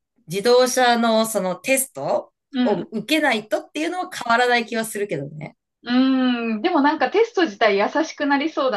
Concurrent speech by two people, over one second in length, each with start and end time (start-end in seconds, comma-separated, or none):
none